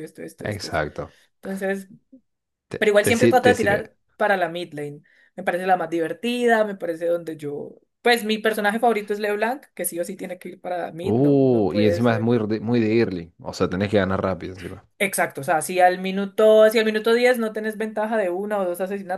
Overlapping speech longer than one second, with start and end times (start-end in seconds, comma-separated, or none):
2.8-4.0, 11.0-12.3